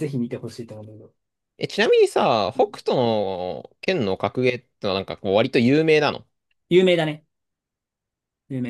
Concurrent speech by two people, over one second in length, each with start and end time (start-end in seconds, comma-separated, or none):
none